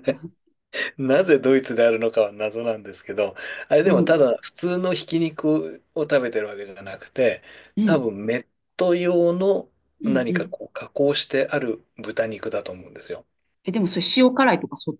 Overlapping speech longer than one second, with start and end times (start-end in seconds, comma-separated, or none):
none